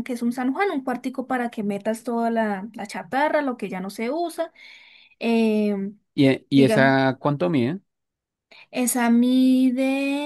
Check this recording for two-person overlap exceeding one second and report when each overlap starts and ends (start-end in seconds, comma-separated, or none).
none